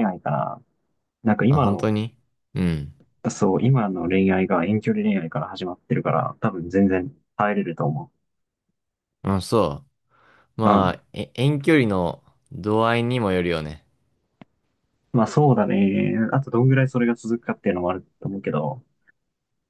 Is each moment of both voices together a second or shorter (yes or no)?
yes